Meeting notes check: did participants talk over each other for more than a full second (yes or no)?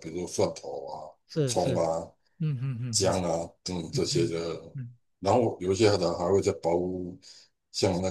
no